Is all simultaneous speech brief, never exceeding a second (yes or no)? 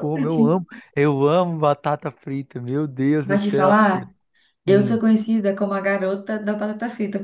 yes